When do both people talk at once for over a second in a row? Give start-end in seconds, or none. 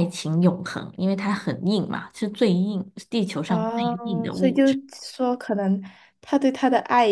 3.5-4.8